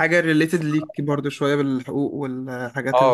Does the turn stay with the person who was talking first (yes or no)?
no